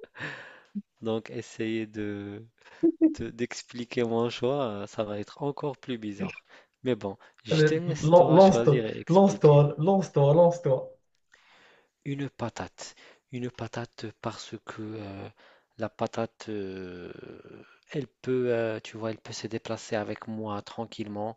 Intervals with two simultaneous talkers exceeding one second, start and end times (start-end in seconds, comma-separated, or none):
7.5-9.7